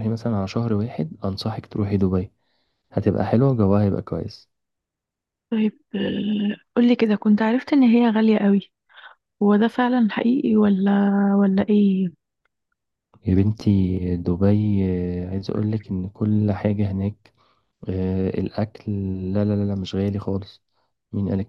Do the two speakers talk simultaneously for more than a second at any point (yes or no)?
no